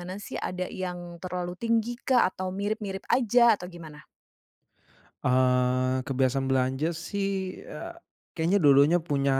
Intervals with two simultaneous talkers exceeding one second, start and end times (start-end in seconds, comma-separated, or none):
none